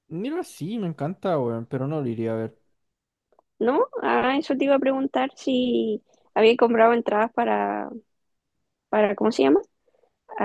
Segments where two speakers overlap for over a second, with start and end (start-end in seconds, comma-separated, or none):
none